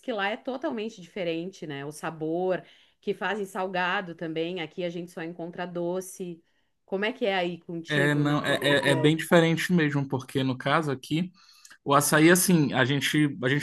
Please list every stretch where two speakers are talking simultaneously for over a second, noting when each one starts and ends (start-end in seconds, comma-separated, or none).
7.9-9.2